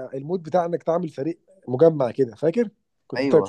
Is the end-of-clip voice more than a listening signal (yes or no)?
no